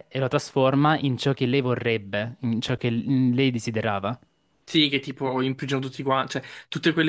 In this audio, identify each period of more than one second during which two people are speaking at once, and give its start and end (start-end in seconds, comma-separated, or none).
none